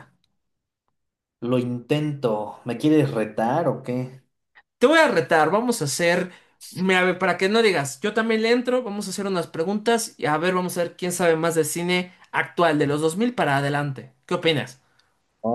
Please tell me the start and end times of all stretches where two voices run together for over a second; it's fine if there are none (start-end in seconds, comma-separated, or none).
none